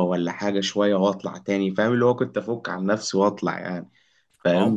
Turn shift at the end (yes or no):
no